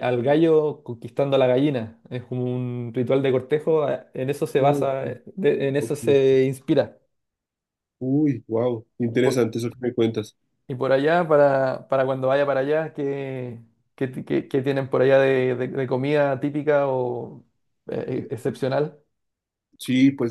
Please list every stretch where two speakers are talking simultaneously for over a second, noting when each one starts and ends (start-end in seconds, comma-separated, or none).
none